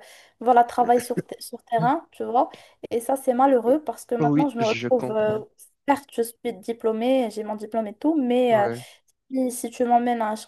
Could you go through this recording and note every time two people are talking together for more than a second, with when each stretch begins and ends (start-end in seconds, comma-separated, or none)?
4.2-5.4